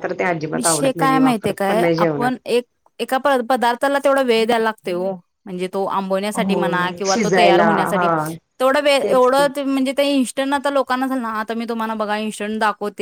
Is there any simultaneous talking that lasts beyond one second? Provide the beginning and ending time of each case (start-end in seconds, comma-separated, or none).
0.5-2.3, 6.3-8.1